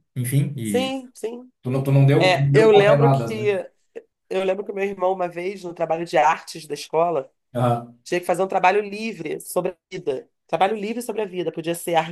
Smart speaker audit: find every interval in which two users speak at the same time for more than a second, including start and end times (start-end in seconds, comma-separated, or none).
2.2-3.5